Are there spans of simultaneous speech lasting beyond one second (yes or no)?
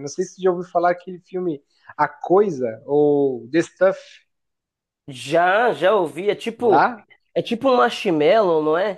no